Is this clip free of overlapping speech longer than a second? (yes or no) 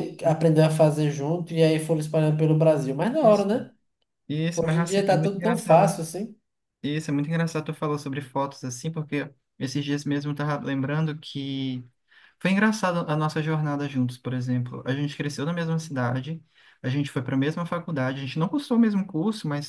no